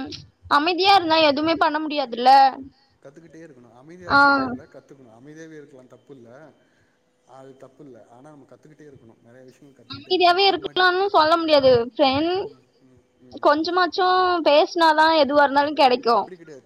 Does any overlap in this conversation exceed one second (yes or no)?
no